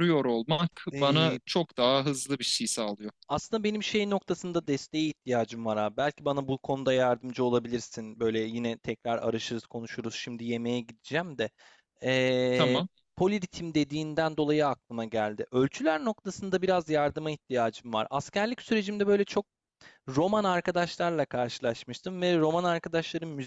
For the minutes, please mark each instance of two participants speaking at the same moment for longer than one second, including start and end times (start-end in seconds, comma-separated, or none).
none